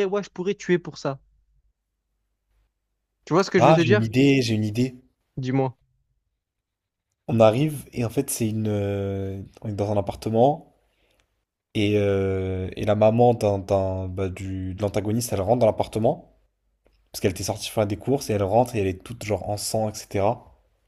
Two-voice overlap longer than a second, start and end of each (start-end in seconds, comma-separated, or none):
none